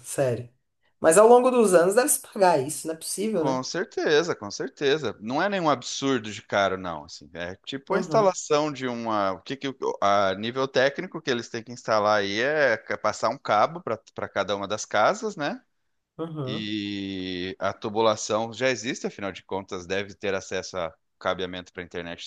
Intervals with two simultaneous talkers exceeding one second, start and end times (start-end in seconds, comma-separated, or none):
none